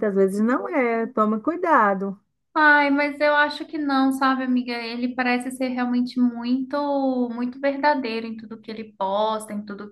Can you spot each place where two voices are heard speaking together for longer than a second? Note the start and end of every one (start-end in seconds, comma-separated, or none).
none